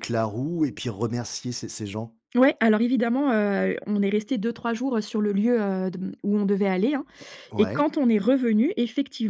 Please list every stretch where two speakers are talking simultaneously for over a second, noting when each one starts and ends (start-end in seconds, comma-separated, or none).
none